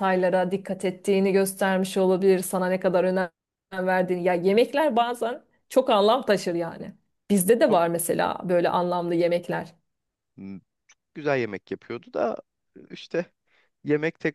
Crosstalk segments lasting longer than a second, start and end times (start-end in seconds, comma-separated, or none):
none